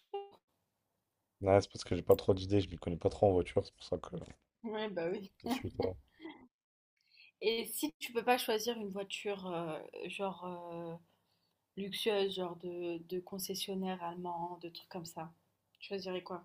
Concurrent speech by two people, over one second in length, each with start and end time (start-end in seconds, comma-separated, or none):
none